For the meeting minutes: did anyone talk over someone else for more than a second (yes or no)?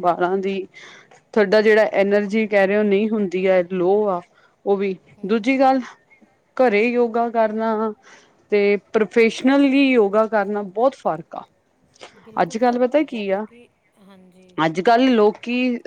no